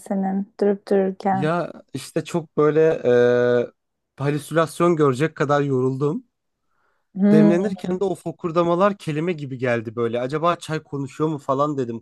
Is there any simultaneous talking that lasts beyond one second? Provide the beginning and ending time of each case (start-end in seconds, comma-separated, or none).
none